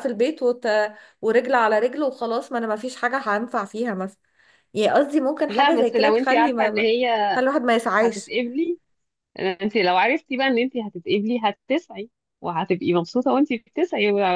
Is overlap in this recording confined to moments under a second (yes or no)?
no